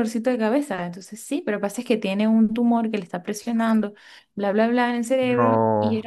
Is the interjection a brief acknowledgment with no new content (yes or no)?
yes